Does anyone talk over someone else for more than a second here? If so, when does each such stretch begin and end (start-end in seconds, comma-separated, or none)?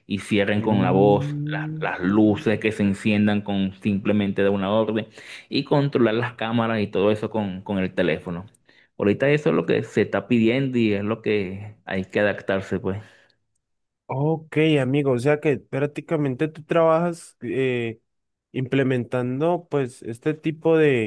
0.6-1.9